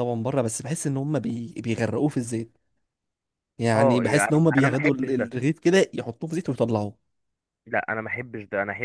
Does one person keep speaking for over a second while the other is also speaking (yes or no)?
yes